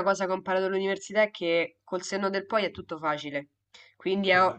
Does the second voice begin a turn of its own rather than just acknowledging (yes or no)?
no